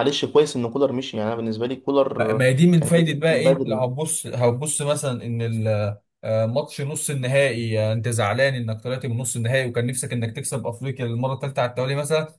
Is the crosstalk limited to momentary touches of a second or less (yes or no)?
no